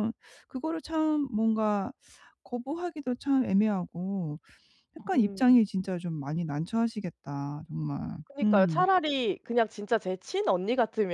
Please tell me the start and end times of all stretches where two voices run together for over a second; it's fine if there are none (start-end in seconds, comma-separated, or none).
none